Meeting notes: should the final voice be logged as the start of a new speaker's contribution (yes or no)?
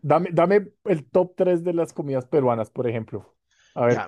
yes